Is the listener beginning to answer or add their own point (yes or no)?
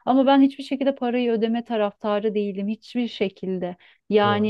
no